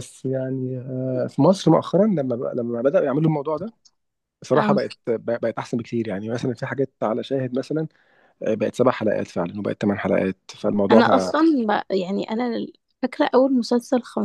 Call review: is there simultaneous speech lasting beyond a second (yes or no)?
no